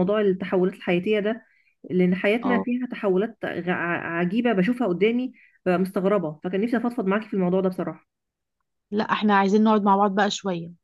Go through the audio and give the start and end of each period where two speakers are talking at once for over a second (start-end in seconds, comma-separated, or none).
none